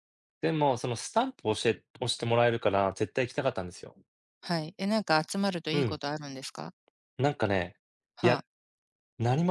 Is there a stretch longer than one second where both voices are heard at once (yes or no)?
no